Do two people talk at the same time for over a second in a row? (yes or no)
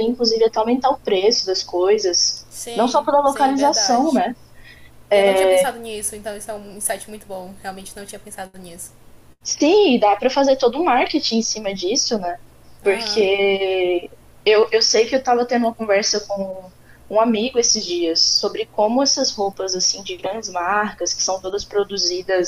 yes